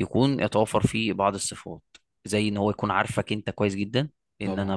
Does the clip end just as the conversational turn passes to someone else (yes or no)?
no